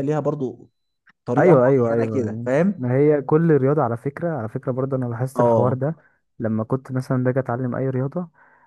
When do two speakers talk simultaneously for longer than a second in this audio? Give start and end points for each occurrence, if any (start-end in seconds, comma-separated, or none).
1.4-2.9